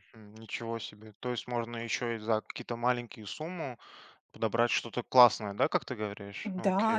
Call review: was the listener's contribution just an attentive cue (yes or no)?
no